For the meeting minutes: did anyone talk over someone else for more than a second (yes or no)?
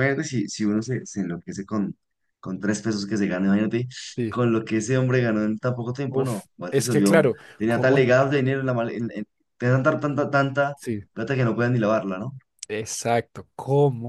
yes